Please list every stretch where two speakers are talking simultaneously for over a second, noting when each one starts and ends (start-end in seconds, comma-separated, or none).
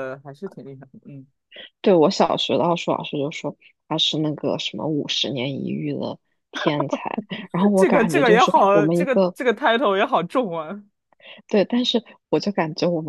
7.7-9.4